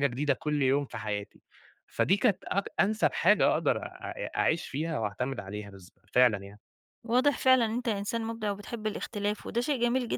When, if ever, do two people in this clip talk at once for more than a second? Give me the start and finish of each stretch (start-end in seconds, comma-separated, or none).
none